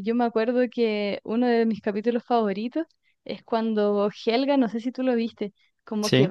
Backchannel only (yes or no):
yes